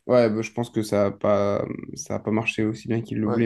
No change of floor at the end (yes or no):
yes